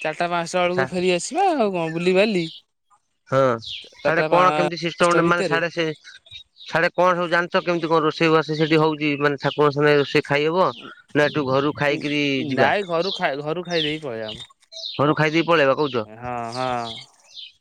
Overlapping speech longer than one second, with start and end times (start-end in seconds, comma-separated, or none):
3.9-5.6